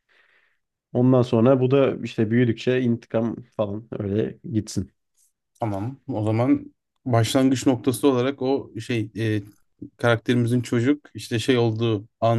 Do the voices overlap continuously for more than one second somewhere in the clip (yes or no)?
no